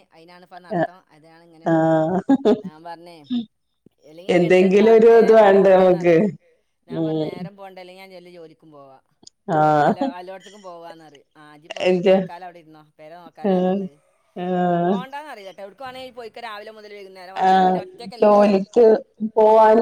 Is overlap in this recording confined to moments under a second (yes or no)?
no